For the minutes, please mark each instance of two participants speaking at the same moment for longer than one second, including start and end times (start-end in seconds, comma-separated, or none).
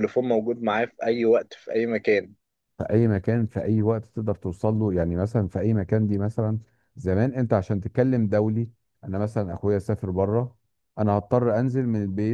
none